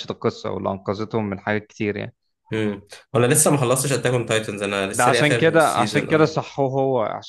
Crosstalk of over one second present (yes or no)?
yes